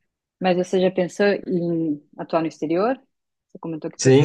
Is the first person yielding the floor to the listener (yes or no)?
yes